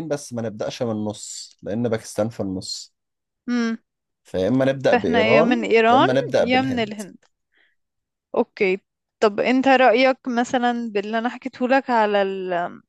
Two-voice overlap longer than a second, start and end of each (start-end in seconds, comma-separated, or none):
4.9-6.9